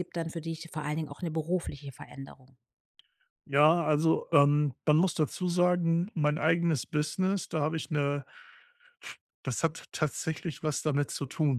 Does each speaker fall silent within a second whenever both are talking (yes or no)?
yes